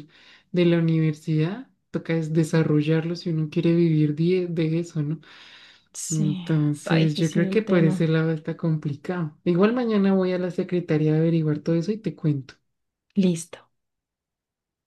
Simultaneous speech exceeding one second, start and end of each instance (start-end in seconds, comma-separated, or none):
6.1-8.1